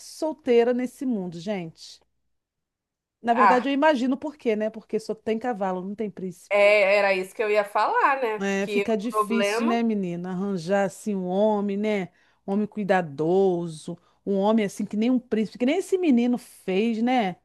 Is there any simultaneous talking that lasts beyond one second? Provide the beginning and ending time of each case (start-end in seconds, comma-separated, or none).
8.4-9.8